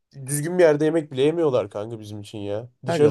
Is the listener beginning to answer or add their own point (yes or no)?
yes